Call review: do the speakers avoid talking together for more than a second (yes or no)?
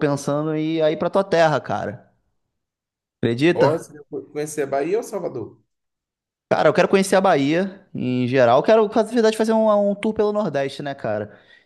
yes